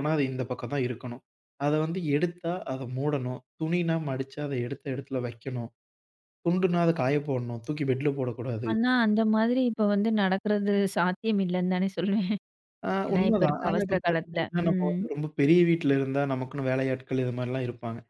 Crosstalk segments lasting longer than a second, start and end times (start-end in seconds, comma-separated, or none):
13.1-15.0